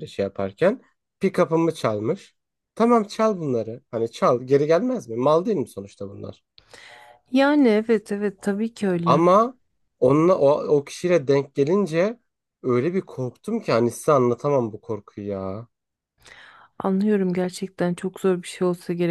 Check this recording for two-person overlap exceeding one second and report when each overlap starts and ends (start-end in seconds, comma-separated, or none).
none